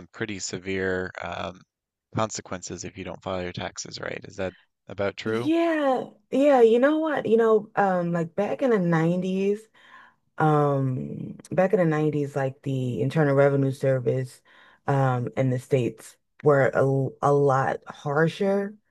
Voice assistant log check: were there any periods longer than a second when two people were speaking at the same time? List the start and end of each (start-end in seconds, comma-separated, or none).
none